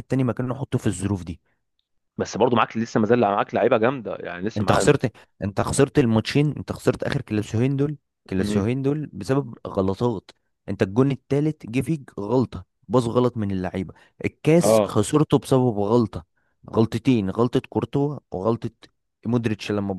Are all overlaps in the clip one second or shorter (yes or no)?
yes